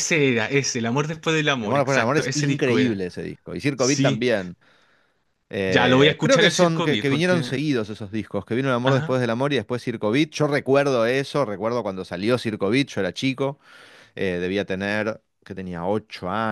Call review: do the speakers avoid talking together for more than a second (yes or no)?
no